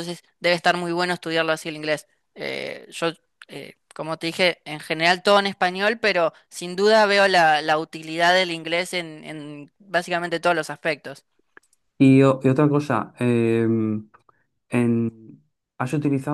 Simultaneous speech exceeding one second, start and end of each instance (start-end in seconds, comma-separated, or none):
none